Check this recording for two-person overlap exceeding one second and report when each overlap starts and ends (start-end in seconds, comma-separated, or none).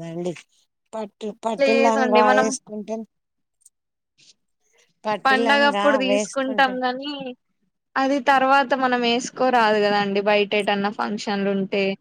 5.2-6.7